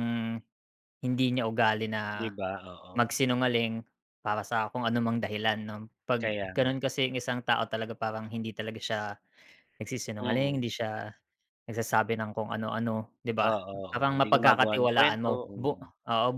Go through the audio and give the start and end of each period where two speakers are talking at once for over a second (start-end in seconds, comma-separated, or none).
13.5-15.9